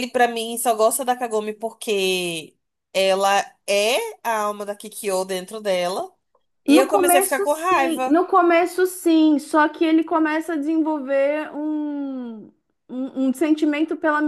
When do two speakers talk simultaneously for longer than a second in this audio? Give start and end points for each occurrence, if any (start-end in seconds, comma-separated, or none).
6.7-8.2